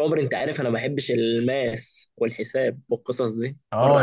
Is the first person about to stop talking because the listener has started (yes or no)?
yes